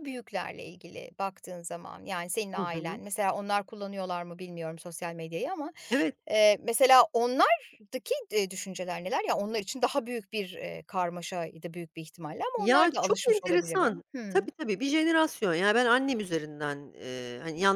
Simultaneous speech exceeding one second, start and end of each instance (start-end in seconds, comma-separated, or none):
12.6-14.5